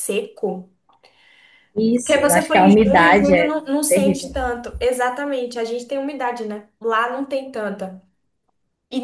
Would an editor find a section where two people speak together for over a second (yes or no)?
yes